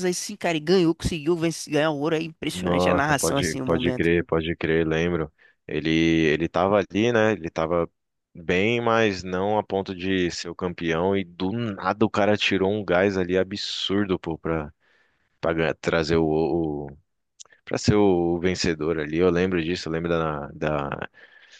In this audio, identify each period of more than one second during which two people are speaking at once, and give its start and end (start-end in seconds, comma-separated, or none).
2.5-4.1